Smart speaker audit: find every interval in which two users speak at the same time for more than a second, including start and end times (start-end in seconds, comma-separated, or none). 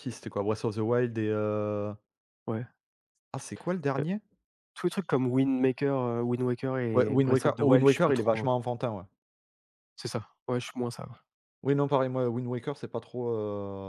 6.9-8.5